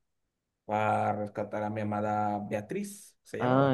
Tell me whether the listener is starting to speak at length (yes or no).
yes